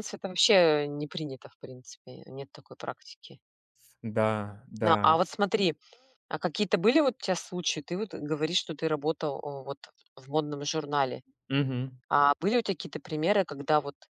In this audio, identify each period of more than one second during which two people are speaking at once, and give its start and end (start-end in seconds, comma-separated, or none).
none